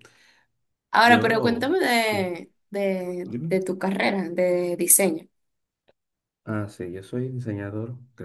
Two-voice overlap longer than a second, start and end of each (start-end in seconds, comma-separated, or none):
1.0-2.3